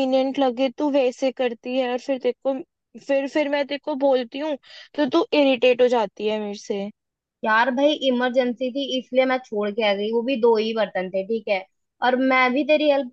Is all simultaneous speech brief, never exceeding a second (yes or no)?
yes